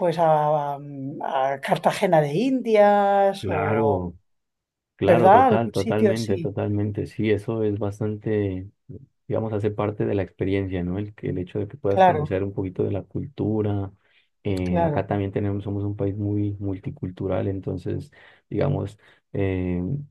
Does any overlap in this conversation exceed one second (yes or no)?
yes